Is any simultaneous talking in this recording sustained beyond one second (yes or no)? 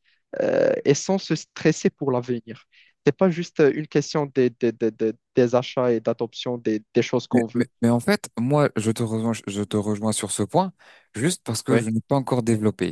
no